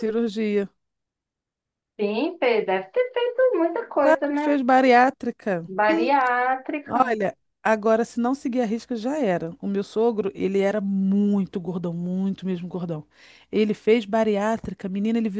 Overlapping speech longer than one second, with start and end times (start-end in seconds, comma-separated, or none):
none